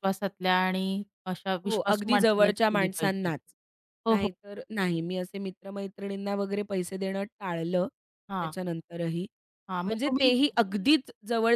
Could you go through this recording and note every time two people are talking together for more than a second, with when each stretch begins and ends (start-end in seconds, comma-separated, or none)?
1.7-3.3